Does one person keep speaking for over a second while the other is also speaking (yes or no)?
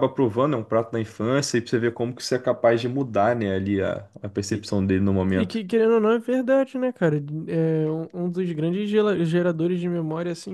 no